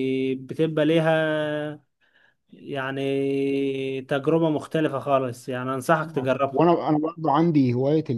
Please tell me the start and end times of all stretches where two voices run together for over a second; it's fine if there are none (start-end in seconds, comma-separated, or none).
none